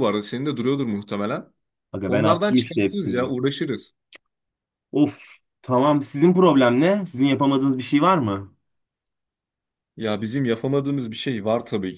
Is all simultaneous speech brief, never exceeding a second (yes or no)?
no